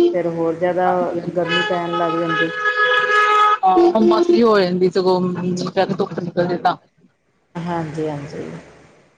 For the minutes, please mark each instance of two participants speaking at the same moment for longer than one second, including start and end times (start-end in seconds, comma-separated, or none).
none